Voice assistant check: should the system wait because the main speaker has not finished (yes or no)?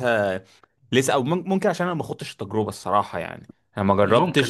yes